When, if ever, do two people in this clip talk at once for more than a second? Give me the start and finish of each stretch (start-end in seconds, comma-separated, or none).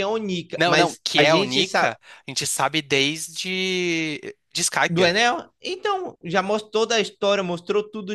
0.6-1.9